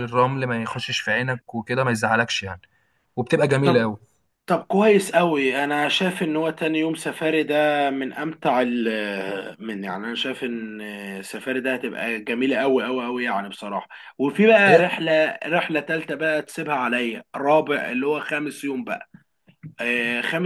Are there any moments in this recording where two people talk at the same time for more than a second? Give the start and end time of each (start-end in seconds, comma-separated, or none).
none